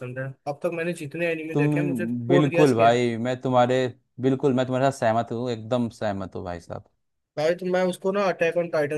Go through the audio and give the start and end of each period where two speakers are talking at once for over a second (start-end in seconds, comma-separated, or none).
1.5-3.0